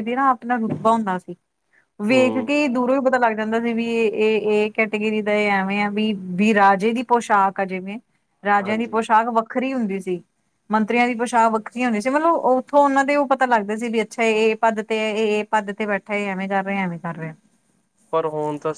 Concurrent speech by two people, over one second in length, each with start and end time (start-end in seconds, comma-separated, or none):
none